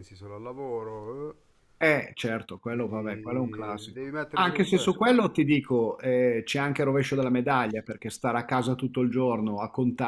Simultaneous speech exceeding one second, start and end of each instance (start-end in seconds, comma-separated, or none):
2.7-4.9